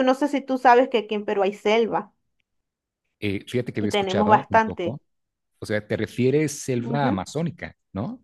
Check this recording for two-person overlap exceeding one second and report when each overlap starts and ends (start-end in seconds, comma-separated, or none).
3.8-5.0